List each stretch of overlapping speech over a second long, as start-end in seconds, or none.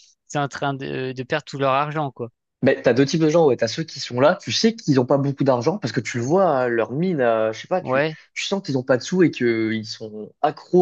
none